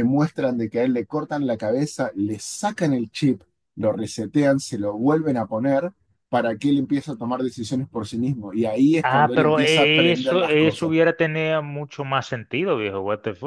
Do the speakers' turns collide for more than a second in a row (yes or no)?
yes